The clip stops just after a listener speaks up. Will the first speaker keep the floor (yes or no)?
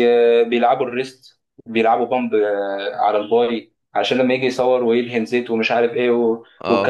yes